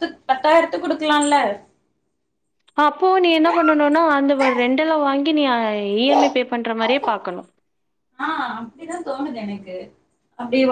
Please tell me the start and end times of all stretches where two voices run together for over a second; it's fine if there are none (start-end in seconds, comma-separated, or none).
none